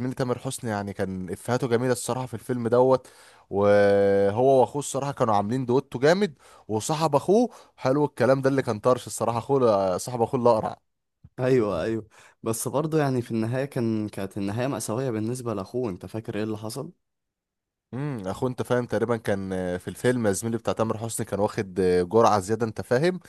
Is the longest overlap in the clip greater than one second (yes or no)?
no